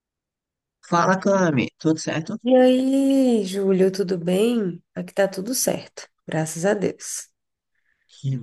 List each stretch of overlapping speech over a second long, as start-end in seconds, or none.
none